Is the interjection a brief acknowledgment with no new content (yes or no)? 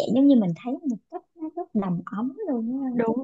no